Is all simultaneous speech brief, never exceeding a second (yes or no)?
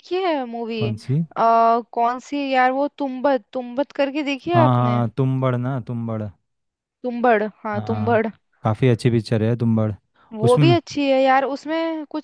yes